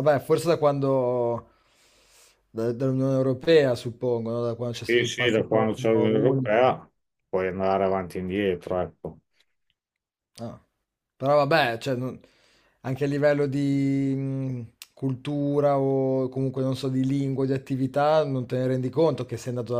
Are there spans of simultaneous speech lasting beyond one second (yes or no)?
yes